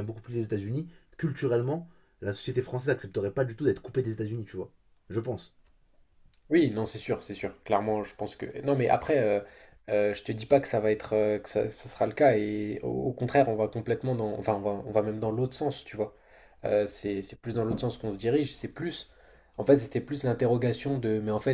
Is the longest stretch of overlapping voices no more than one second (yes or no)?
yes